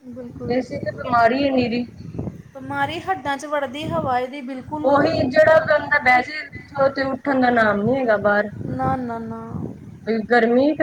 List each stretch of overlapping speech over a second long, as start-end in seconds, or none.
none